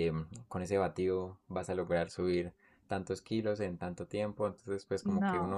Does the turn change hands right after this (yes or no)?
no